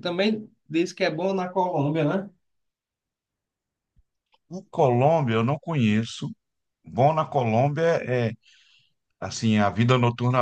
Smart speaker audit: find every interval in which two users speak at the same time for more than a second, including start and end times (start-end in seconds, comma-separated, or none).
none